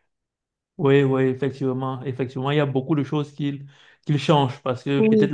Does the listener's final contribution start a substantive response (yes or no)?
no